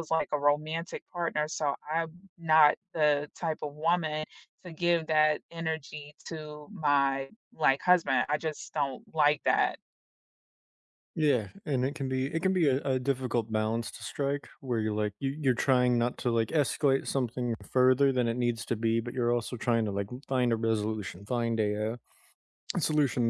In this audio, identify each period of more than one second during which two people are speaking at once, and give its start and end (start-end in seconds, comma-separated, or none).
none